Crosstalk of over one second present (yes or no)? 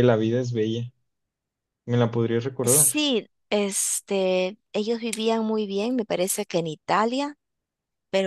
no